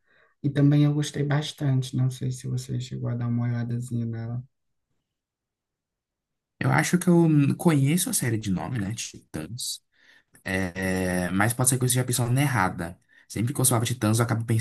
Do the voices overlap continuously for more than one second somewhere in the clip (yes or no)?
no